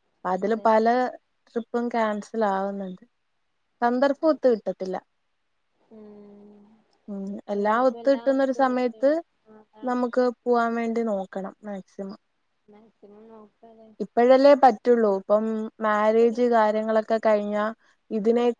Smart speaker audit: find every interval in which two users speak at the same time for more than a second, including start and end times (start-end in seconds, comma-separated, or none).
7.6-9.1